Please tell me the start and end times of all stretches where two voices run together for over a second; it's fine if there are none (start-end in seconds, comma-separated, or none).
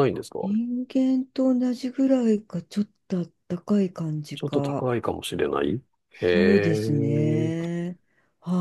6.2-7.5